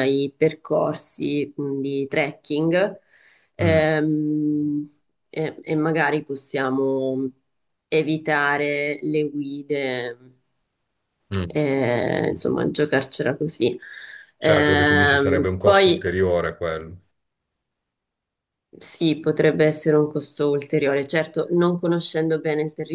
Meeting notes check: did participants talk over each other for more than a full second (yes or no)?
yes